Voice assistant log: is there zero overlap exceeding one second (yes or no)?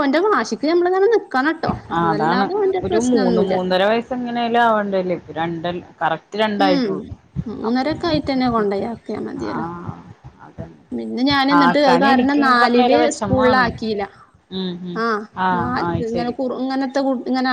no